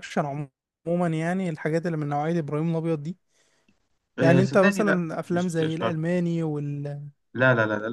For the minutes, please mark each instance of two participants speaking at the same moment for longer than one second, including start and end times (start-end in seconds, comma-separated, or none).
4.2-6.0